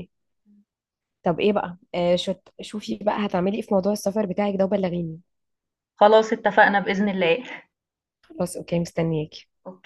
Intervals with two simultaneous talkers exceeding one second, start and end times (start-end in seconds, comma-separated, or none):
none